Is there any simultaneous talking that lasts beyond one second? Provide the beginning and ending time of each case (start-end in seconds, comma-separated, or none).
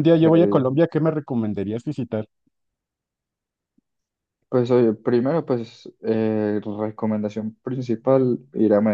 none